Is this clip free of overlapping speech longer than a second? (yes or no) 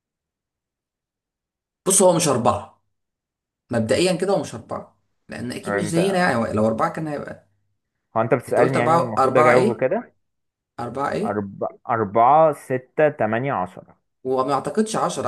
no